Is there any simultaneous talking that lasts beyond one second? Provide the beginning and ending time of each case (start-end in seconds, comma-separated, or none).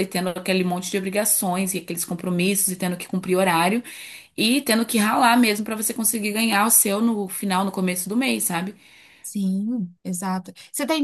none